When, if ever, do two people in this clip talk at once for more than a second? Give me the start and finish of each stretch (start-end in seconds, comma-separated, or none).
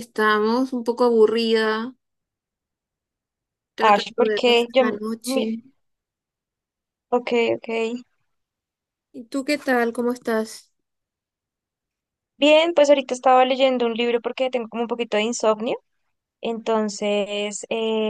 3.8-5.5